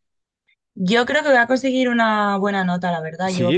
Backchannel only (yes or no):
no